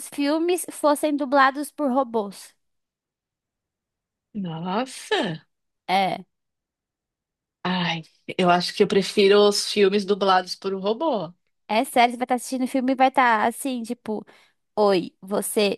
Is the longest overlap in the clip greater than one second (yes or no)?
no